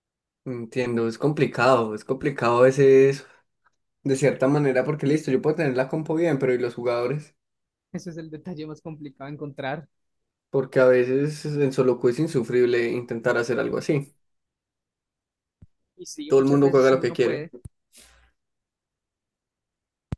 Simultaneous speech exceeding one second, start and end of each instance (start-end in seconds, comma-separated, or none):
16.3-17.5